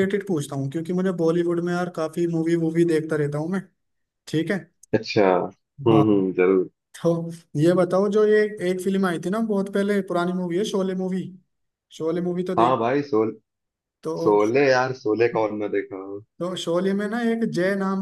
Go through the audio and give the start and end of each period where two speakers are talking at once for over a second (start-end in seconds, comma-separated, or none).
none